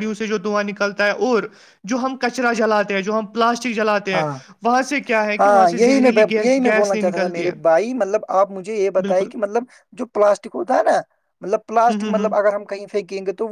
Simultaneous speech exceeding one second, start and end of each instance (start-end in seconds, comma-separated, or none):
5.4-7.5